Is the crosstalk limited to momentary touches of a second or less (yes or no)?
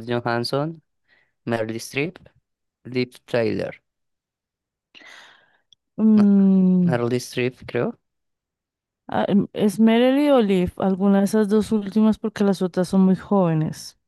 yes